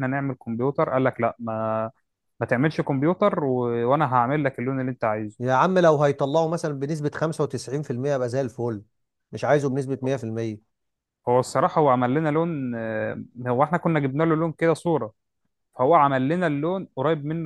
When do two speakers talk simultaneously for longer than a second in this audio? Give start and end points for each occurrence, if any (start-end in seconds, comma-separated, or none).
none